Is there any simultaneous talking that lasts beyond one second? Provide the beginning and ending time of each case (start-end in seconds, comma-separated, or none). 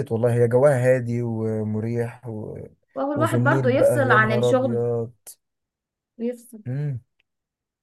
3.1-4.8